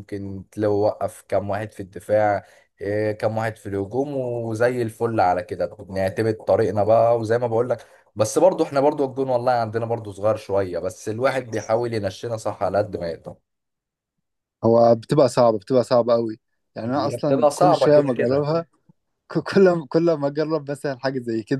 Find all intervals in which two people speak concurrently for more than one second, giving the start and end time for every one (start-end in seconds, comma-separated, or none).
16.9-18.5